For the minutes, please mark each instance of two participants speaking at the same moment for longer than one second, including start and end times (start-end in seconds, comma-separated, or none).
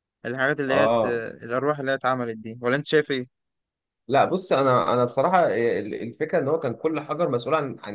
none